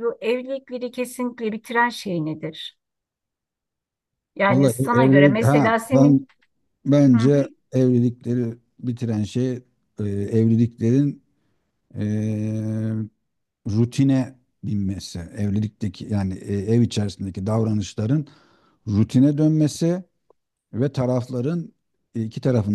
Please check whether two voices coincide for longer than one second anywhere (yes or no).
yes